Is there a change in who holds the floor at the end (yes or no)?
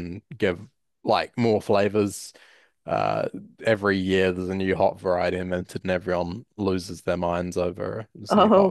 no